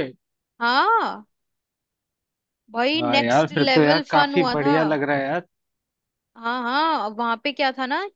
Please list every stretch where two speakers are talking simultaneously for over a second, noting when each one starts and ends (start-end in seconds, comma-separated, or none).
3.0-4.8